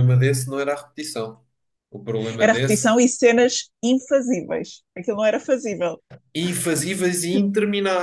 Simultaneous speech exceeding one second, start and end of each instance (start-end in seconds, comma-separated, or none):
none